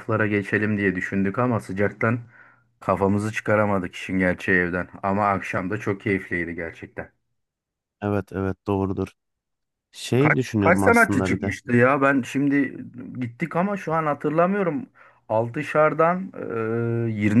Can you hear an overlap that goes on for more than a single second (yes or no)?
yes